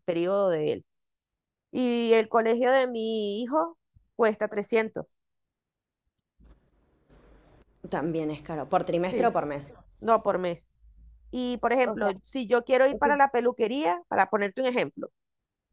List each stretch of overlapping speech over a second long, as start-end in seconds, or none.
none